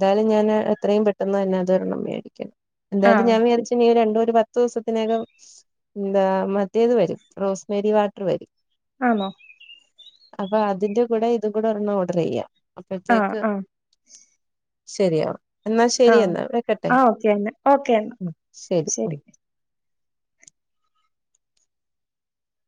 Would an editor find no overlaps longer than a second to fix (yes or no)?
yes